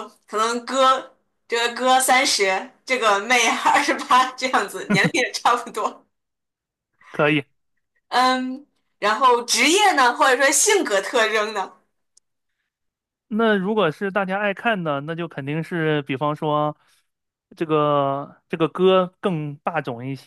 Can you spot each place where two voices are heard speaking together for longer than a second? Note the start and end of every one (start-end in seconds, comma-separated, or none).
none